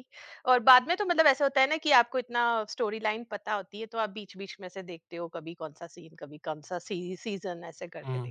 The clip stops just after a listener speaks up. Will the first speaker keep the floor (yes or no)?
no